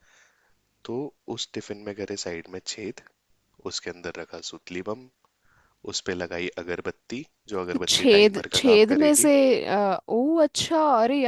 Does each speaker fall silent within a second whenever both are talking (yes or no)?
no